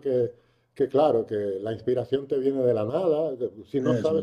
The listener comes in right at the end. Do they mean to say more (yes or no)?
no